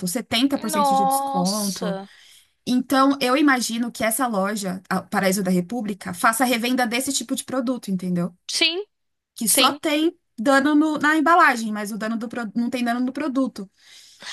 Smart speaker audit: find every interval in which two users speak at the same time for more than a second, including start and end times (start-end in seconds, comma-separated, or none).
0.7-2.0